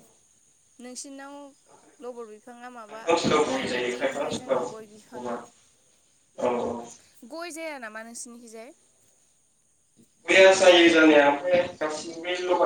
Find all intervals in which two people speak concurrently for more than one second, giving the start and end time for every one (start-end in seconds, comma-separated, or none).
2.9-5.3